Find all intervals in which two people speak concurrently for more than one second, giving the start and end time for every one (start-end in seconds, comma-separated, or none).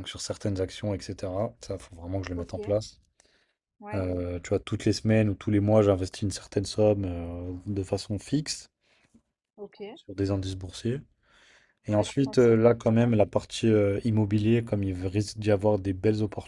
11.9-13.1